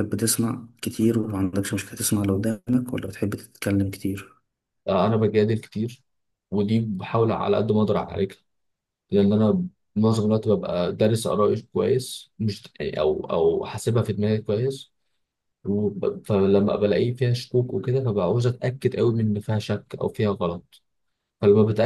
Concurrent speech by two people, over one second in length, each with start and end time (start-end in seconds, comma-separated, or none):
none